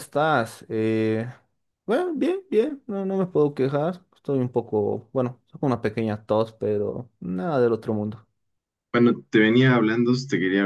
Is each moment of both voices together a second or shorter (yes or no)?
yes